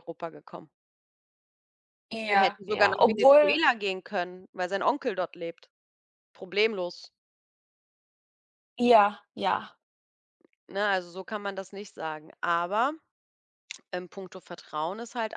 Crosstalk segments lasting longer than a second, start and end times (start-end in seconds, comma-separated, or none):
2.3-3.6